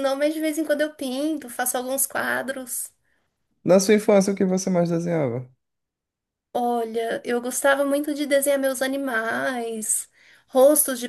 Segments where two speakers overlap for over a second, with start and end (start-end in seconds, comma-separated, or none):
none